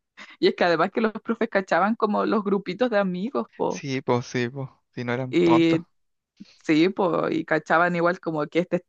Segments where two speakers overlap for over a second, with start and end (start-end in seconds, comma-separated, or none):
none